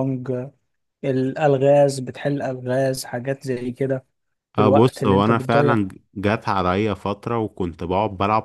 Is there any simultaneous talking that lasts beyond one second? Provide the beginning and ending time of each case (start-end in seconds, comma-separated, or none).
4.6-5.8